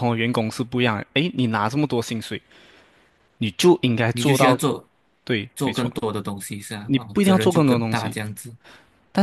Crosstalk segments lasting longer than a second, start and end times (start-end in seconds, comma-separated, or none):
6.8-8.2